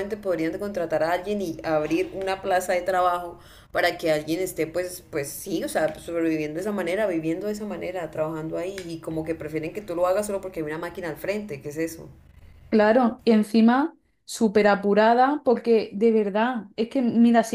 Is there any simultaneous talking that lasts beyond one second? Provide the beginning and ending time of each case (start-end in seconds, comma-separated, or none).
none